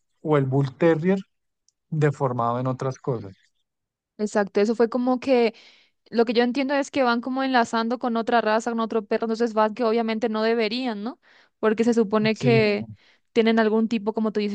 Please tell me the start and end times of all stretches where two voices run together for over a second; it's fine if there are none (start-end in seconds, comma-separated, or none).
none